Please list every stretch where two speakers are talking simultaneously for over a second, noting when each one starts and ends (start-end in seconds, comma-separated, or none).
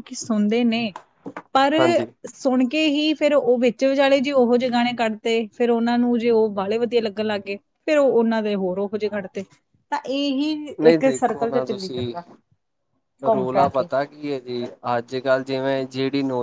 10.9-12.1